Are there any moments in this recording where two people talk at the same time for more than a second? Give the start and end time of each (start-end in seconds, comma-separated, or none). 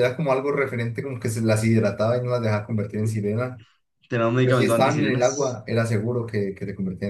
4.4-5.6